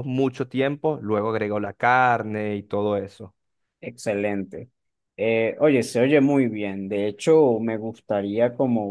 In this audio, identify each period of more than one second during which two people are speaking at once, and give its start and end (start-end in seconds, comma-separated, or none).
none